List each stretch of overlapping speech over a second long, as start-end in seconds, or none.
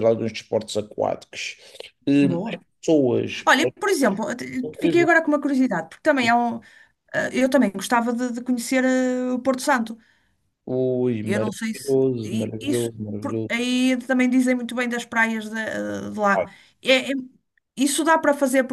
11.2-13.7